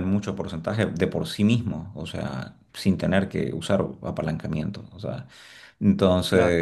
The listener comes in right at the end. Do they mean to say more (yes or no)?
no